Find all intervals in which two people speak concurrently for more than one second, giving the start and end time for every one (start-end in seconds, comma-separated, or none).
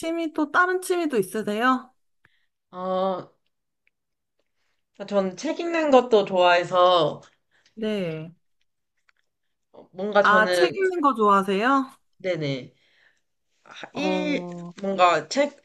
none